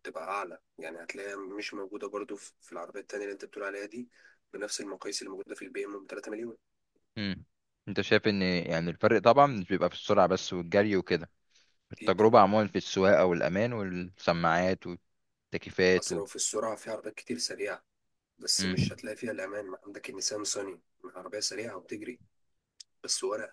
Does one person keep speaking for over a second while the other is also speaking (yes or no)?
no